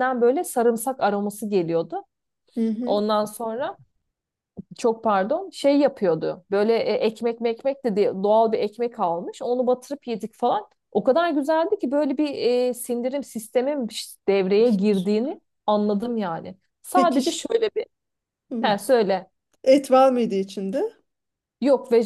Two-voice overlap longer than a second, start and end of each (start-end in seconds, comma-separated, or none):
none